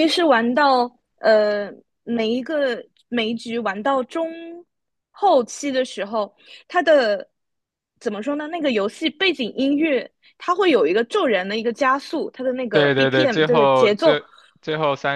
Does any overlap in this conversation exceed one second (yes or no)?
yes